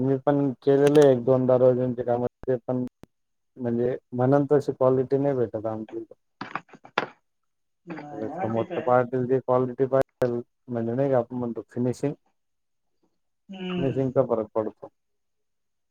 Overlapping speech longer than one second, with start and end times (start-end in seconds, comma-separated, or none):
none